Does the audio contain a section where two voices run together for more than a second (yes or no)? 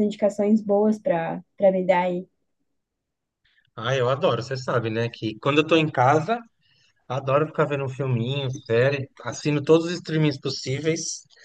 no